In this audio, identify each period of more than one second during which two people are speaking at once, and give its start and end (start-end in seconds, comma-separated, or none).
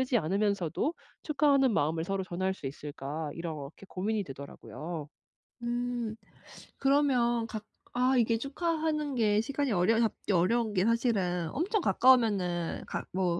none